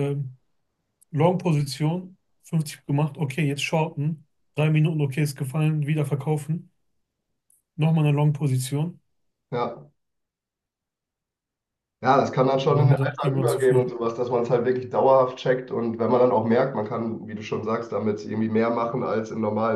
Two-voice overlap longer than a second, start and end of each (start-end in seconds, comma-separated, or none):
12.7-13.9